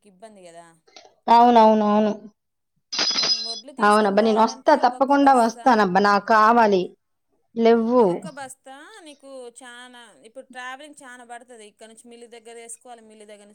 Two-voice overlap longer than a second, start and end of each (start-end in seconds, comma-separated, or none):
3.9-5.7